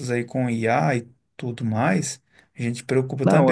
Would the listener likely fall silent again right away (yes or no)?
yes